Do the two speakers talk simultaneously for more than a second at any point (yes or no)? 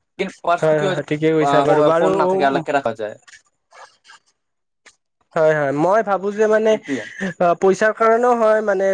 yes